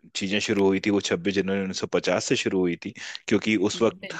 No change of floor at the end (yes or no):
yes